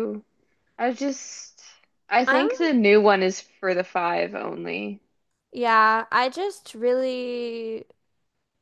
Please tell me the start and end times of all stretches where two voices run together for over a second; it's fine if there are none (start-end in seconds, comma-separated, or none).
none